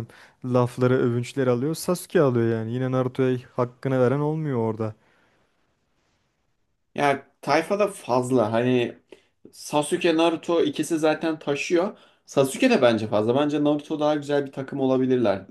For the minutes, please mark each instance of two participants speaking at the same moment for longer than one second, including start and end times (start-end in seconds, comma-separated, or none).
none